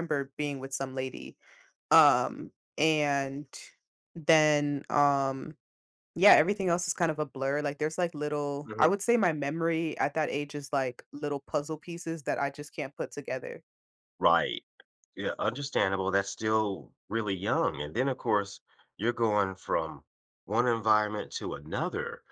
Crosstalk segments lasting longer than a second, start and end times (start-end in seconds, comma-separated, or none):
none